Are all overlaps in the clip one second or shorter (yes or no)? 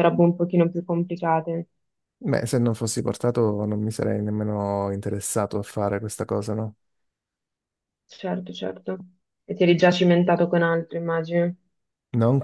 yes